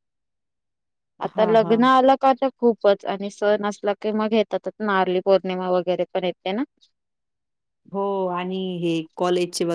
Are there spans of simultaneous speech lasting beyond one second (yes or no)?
no